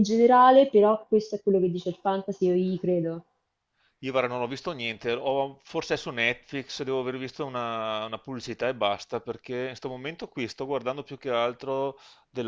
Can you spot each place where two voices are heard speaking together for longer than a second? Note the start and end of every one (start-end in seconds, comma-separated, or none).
none